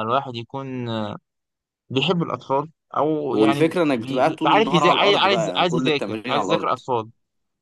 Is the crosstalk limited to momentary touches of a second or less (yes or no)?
no